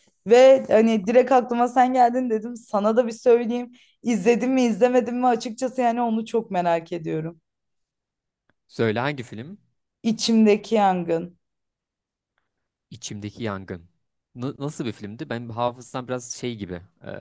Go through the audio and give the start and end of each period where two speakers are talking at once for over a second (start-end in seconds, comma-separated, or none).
none